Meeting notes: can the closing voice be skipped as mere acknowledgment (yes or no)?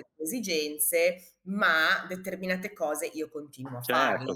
no